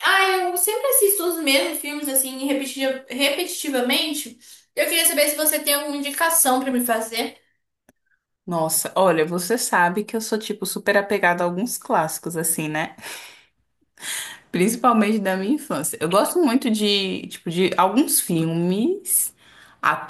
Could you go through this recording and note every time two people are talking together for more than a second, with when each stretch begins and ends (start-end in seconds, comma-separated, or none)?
none